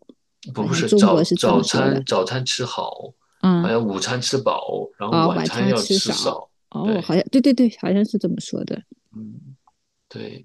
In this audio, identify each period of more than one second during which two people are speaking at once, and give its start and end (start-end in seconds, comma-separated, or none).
0.5-2.0, 5.1-7.2